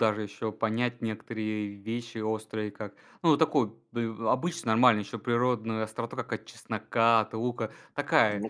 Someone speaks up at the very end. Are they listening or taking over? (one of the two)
listening